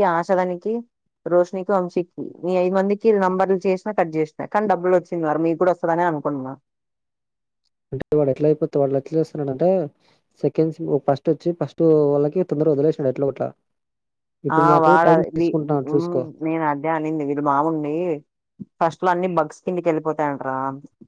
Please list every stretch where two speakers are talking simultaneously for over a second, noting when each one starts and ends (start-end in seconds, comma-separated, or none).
none